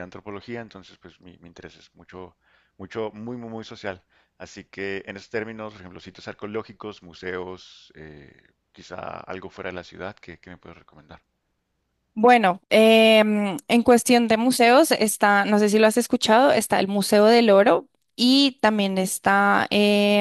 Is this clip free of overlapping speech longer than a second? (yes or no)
yes